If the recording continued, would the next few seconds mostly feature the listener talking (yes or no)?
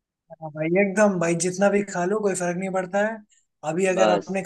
no